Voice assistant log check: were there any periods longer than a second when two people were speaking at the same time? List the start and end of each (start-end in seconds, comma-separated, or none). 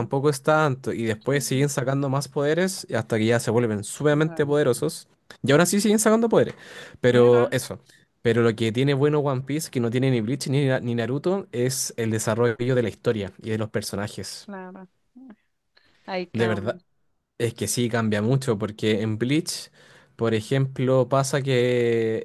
none